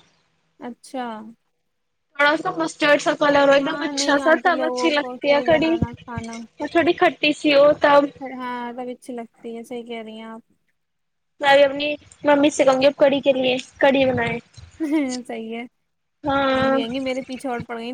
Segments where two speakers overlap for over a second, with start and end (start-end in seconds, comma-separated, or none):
3.6-5.7